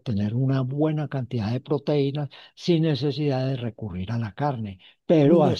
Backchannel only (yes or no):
yes